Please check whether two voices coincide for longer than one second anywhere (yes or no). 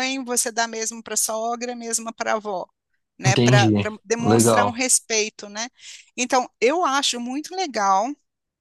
yes